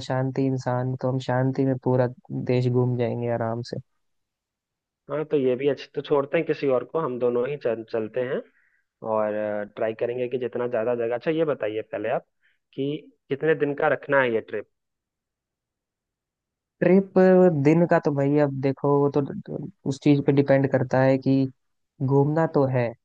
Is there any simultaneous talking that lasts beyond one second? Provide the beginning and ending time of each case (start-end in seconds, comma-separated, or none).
none